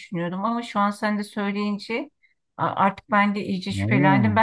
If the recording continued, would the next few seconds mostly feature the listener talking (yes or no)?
no